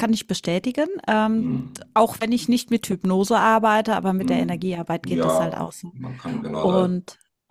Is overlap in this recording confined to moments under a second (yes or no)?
no